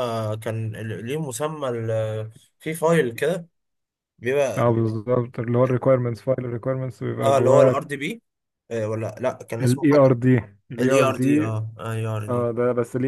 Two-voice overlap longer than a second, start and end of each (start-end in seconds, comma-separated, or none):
none